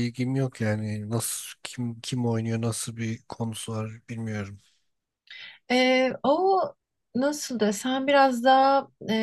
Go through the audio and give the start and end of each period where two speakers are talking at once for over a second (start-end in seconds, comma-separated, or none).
none